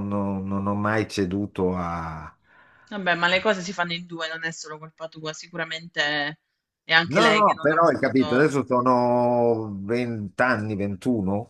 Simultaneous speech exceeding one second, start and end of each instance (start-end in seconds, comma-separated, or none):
7.0-8.5